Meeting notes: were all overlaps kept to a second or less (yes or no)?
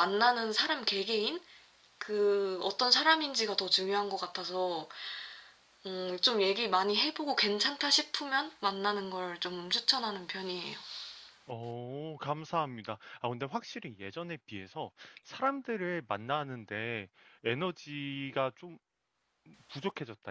yes